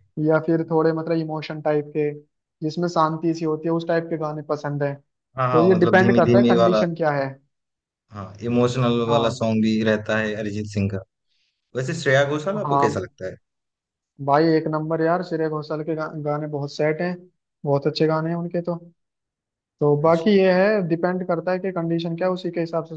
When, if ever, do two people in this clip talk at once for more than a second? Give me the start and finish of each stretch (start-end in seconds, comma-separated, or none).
5.5-6.8